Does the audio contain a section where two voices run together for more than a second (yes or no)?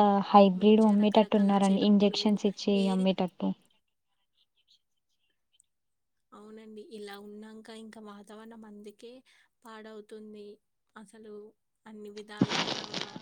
yes